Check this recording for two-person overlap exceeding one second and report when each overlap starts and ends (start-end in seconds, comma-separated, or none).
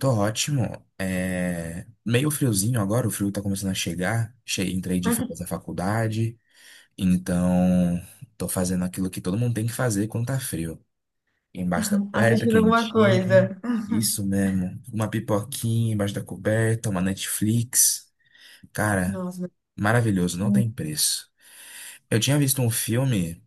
12.1-13.5